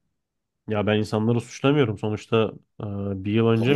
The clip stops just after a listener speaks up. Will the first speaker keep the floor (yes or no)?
no